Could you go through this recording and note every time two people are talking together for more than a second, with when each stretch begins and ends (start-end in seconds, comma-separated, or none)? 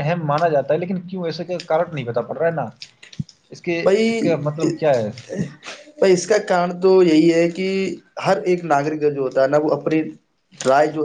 none